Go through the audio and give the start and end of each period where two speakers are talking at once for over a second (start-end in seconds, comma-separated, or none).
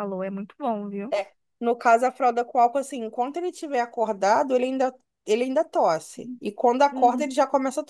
none